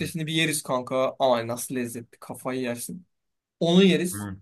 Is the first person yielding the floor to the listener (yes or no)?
no